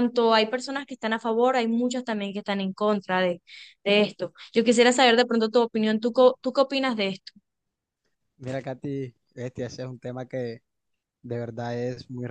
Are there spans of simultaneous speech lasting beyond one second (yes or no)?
no